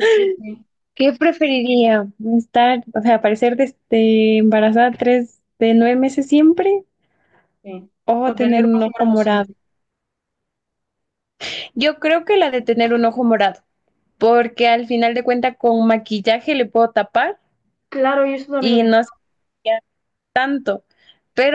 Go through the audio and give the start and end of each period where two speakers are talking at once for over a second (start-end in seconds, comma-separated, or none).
8.1-9.5